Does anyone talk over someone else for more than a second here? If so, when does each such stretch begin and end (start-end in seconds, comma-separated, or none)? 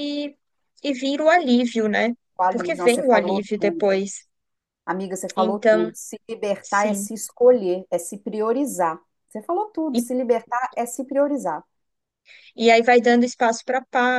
2.4-4.0